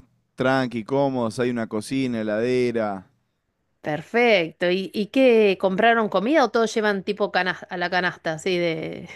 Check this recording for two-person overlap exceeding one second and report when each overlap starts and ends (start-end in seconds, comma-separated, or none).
none